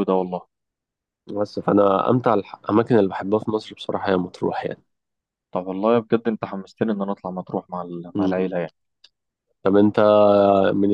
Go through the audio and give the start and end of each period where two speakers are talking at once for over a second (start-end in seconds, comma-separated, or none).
none